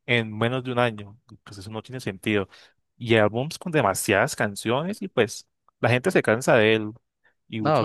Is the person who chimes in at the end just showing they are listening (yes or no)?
no